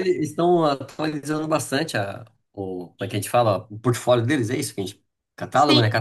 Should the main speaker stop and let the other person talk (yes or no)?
yes